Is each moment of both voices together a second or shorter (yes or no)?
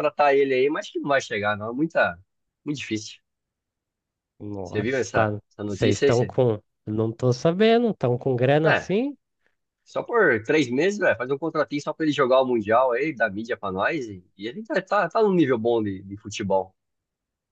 no